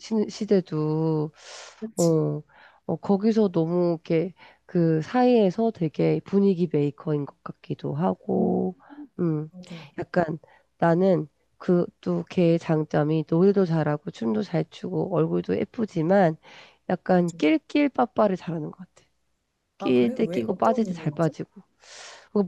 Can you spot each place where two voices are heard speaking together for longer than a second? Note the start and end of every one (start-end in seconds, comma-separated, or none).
19.8-21.3